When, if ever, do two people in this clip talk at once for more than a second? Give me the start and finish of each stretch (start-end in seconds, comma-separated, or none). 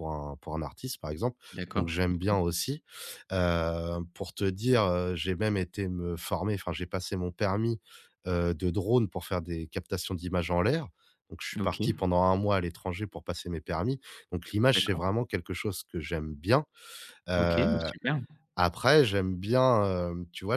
none